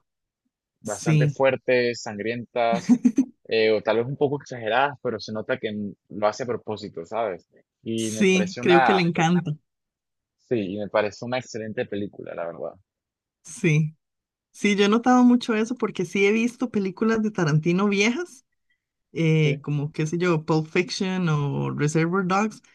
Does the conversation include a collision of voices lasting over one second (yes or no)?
yes